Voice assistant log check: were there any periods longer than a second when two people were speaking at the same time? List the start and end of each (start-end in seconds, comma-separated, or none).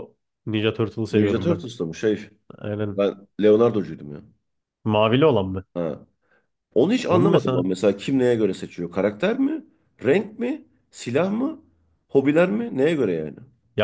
none